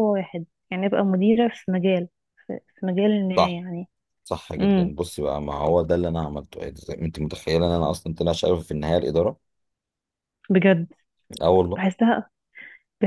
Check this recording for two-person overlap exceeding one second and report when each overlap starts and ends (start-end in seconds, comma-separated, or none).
none